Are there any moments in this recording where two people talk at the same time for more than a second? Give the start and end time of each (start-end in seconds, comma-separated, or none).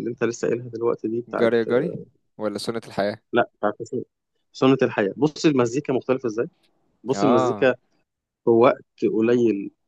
none